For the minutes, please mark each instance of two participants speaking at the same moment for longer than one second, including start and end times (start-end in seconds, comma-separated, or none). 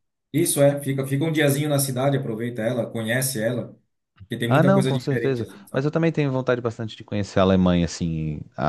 4.5-5.9